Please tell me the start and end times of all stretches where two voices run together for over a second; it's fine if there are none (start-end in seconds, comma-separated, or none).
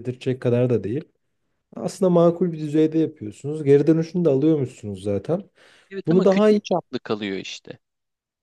none